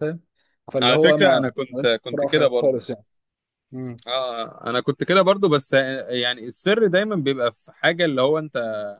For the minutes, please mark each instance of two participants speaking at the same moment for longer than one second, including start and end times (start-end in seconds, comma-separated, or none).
0.8-2.8